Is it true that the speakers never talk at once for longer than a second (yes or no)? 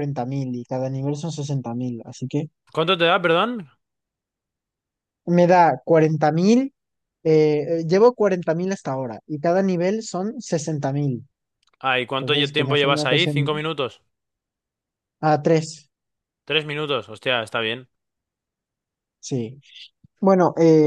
no